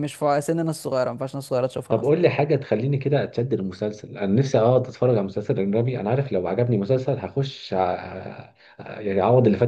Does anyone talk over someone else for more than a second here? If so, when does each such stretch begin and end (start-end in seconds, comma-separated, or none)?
none